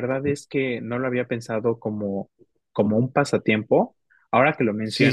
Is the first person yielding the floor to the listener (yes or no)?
yes